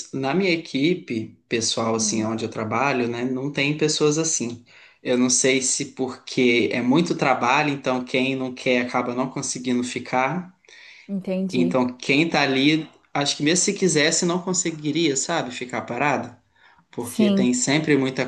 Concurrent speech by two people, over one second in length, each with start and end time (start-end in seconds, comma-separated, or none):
none